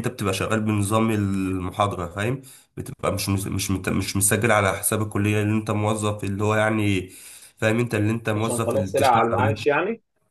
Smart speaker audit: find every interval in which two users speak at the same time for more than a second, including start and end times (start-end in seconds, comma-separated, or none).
8.3-9.6